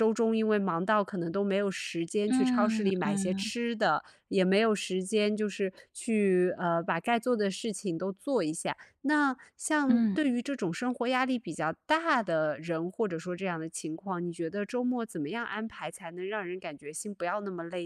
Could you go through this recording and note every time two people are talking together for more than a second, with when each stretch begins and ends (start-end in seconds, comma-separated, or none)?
2.3-3.5